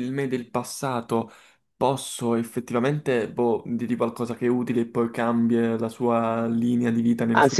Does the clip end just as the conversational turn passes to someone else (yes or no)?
yes